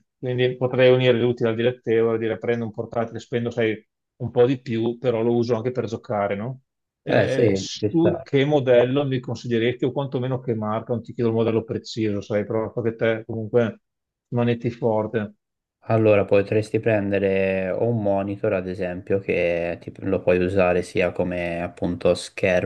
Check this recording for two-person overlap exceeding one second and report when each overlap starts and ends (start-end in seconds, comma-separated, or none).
7.1-8.3